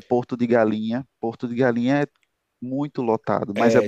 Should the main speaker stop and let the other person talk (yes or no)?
yes